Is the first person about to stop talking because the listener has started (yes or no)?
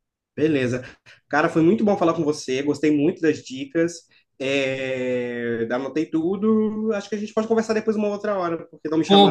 yes